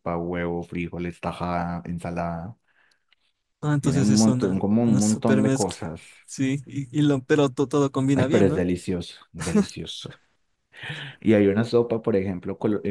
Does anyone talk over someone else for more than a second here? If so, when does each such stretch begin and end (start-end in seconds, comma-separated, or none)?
3.8-6.0